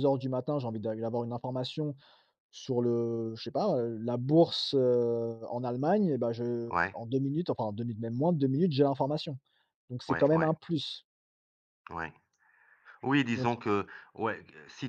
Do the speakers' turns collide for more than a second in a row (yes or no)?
no